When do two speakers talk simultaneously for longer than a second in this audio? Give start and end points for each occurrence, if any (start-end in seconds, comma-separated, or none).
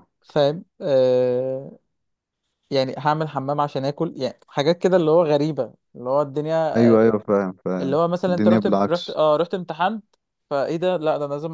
7.8-9.2